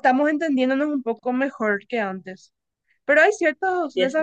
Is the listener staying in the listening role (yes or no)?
yes